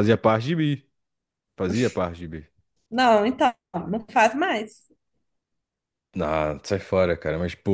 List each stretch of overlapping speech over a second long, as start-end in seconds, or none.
none